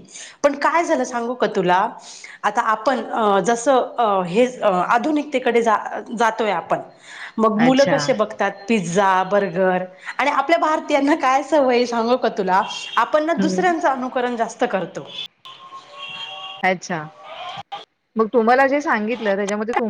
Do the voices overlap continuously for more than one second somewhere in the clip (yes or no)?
no